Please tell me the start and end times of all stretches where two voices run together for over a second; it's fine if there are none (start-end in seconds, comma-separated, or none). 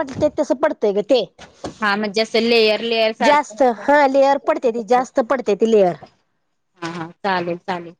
3.2-5.0